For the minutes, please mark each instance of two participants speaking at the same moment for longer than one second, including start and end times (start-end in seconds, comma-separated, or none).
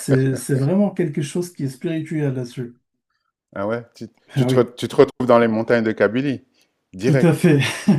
none